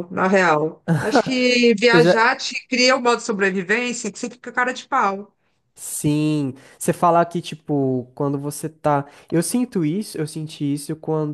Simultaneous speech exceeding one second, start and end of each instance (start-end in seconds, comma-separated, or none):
none